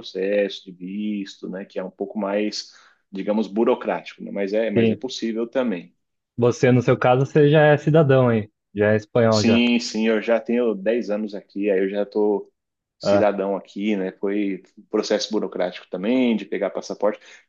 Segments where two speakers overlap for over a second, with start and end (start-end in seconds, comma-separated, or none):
none